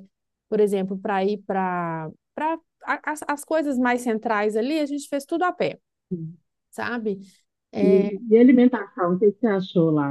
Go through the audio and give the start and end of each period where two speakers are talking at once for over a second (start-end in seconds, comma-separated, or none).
none